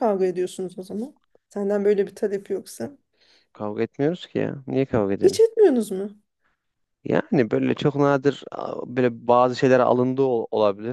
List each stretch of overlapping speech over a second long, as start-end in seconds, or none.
none